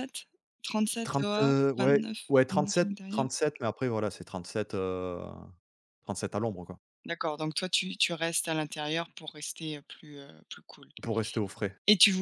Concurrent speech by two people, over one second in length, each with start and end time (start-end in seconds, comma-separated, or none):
1.0-3.2